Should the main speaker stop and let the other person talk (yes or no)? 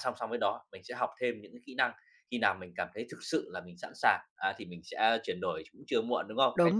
yes